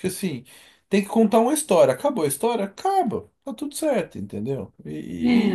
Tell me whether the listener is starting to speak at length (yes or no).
no